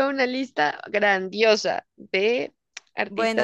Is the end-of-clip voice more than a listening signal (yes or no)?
yes